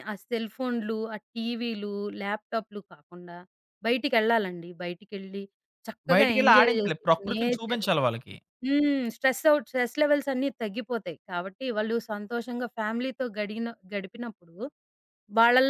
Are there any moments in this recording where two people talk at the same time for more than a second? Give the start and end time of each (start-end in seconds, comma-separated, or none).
6.1-7.9